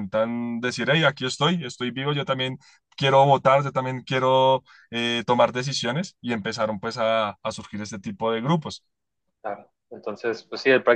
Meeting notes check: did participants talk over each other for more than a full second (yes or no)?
no